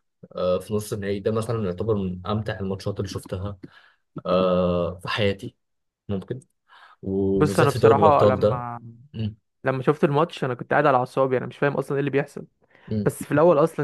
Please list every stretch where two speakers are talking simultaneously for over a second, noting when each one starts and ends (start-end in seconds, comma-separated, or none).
7.3-8.7